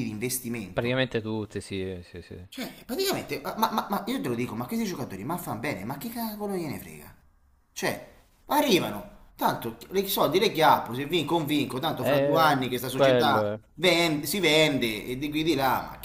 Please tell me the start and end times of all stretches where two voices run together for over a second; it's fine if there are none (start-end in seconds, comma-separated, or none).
12.0-13.6